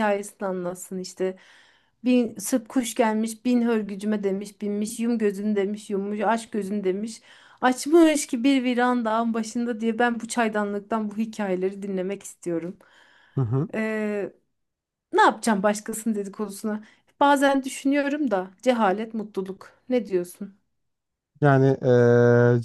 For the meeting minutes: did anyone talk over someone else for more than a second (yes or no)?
no